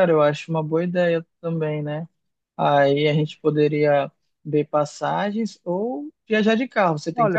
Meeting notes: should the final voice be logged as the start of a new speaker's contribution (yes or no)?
yes